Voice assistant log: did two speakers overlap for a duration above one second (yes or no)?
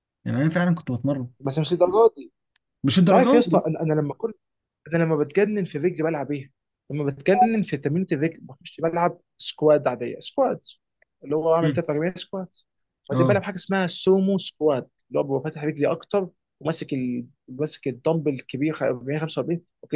no